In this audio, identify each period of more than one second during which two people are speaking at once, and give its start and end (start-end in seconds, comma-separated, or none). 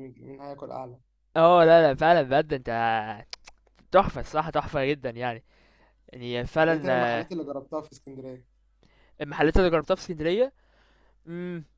none